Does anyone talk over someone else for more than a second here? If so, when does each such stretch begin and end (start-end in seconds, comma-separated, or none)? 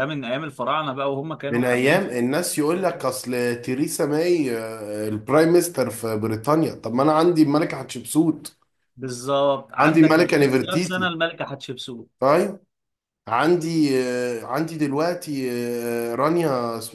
9.8-11.1